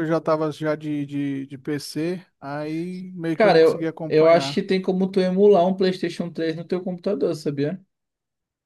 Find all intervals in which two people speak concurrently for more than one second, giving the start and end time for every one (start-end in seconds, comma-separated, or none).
3.3-4.6